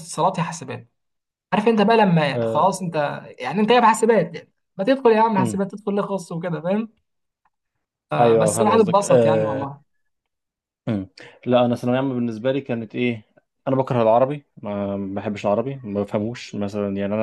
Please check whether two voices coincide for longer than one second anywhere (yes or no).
yes